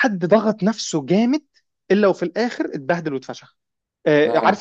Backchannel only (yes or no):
yes